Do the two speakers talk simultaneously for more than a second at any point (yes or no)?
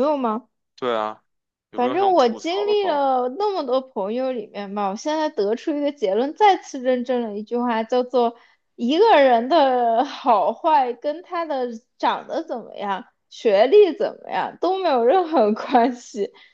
yes